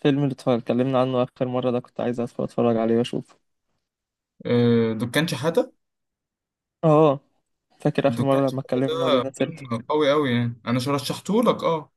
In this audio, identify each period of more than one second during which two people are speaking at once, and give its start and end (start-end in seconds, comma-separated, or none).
8.1-9.6